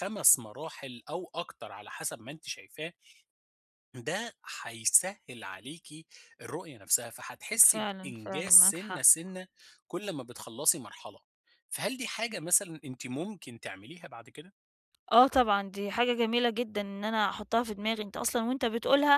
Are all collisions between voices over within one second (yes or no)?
no